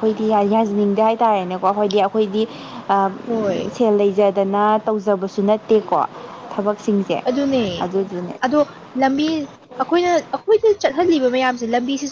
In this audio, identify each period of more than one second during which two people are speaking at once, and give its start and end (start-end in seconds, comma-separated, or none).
none